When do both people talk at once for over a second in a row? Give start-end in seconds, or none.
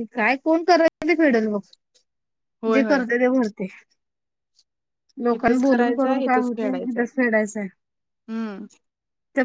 5.3-7.0